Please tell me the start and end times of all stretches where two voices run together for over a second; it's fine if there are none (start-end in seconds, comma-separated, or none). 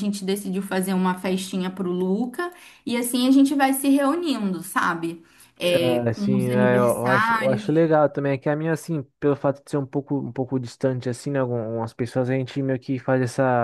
6.0-7.9